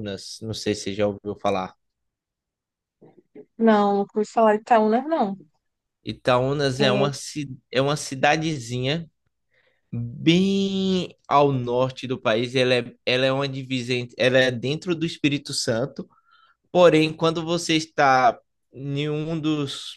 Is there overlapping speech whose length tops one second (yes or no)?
no